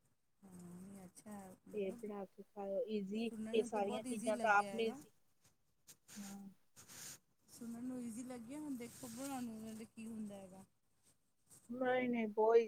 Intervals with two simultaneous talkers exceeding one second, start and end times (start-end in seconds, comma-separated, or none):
3.3-5.0